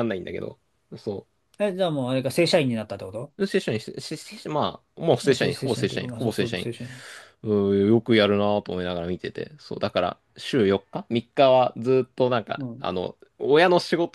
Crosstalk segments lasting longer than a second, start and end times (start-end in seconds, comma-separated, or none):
5.2-6.7